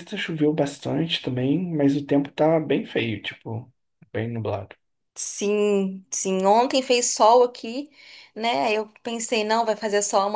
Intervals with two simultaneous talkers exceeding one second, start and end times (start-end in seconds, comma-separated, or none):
none